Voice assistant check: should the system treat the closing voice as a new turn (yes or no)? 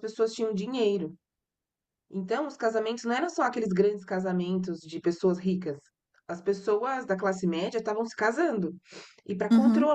no